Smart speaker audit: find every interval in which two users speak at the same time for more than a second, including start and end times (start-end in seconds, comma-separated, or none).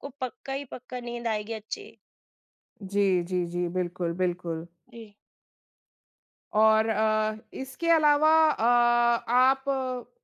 none